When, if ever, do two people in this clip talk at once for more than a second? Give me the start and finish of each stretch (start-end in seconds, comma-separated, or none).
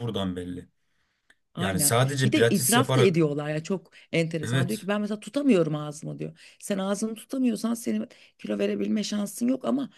1.6-3.2